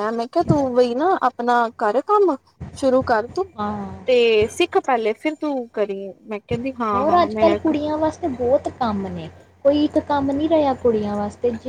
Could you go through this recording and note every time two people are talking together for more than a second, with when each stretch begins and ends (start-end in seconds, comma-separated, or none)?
none